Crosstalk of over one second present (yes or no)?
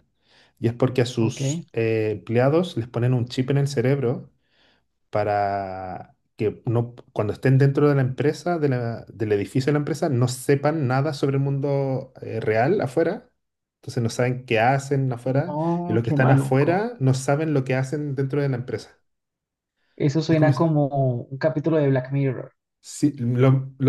yes